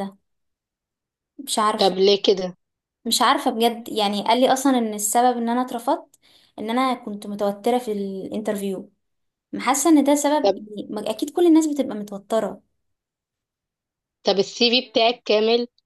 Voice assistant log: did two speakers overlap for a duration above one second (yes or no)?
no